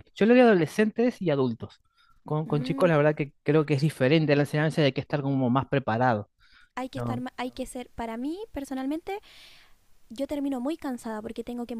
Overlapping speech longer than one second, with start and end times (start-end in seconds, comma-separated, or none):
none